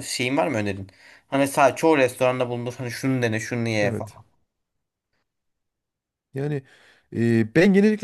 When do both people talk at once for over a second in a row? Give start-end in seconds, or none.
none